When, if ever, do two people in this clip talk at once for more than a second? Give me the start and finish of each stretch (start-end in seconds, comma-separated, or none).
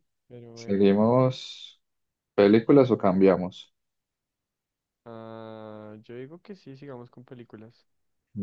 none